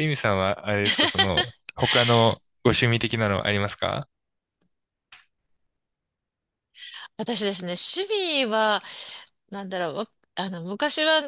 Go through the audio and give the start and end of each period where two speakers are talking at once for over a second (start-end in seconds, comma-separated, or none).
none